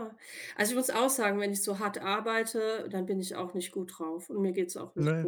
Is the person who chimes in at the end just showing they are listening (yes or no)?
yes